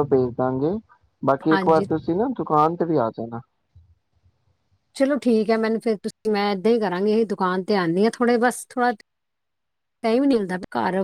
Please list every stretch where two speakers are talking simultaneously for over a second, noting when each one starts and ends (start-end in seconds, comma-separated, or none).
none